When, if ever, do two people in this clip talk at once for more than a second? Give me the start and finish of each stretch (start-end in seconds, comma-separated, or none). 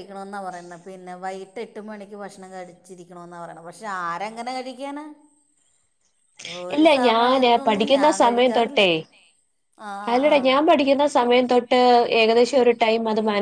6.8-8.8